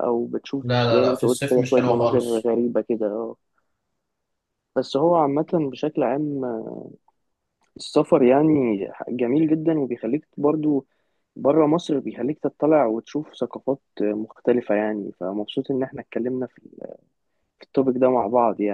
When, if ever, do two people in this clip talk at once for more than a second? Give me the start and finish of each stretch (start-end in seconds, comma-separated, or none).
0.6-2.4